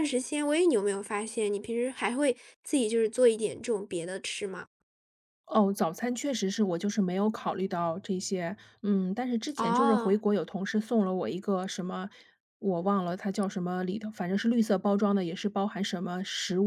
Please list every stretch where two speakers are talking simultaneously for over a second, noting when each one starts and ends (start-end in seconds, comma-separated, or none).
none